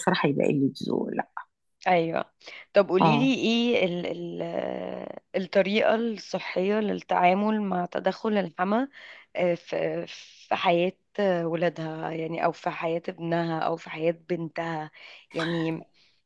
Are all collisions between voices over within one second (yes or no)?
yes